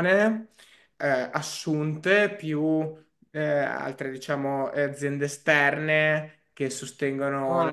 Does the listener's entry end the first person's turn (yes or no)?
no